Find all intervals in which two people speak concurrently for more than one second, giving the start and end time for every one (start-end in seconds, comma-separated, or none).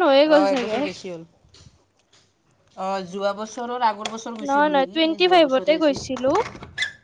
4.5-6.2